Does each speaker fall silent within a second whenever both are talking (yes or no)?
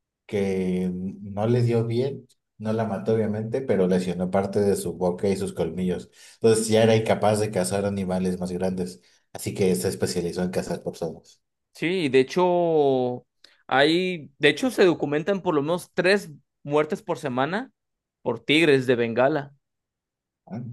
yes